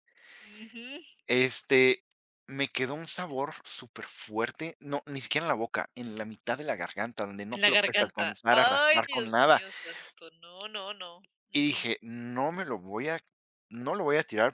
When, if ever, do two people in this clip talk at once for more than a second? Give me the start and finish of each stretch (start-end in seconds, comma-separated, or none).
7.5-9.6